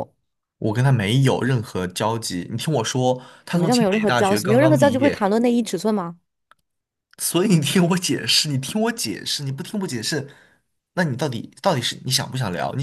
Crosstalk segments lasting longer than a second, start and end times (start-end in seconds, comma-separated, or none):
3.5-5.3